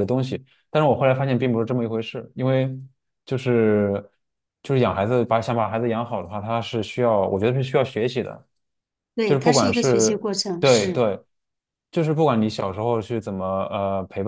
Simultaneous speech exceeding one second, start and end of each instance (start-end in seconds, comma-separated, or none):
9.2-11.0